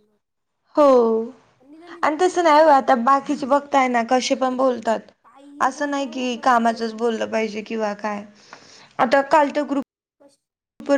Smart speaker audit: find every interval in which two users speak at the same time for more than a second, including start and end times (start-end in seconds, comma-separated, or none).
2.0-3.4, 5.7-7.2